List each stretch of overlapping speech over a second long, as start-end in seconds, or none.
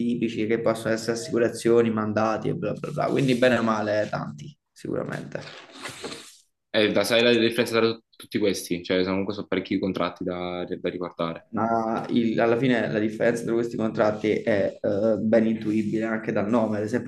none